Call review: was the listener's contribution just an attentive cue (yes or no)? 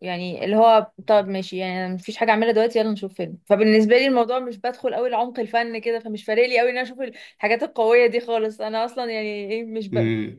yes